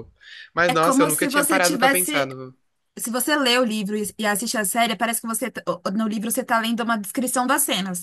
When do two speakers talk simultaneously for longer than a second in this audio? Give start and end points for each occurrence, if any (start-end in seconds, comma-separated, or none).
0.7-2.3